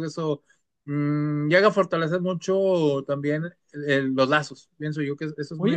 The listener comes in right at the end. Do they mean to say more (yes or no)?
yes